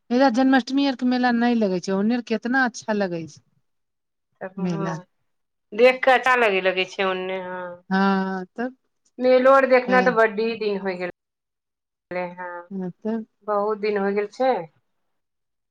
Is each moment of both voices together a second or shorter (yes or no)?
yes